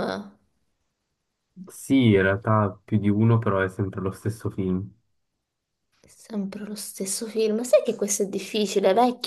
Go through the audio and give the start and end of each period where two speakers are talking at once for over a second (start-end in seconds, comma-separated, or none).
none